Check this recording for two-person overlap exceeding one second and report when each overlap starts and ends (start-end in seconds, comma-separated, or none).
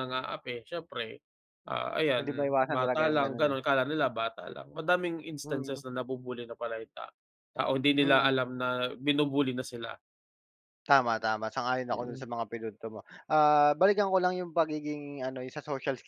2.2-3.6